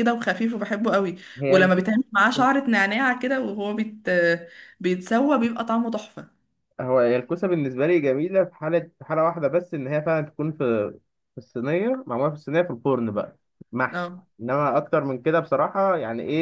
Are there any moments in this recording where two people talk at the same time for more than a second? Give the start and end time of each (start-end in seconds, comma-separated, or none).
none